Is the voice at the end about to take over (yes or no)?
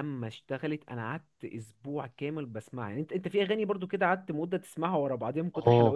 yes